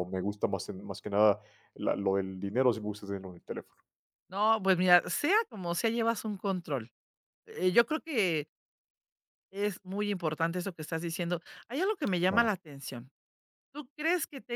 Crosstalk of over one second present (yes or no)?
no